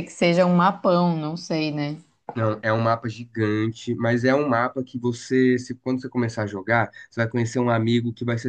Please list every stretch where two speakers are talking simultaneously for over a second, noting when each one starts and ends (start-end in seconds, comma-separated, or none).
none